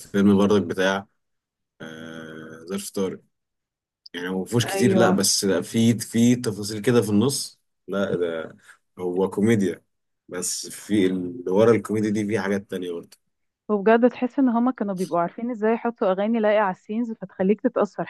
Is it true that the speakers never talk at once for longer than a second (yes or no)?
yes